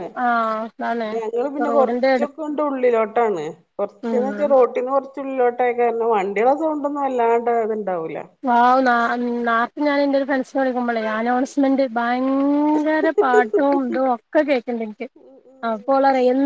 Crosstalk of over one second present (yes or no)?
no